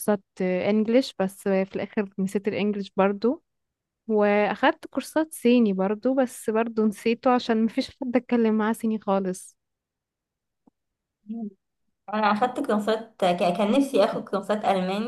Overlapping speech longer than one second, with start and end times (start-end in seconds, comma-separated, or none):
none